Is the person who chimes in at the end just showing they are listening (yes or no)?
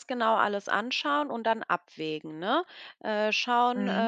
yes